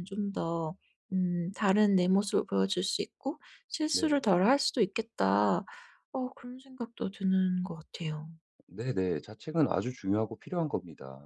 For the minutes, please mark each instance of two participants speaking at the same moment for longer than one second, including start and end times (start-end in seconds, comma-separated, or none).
none